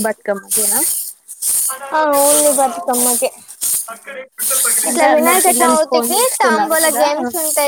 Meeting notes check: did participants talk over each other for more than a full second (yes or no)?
yes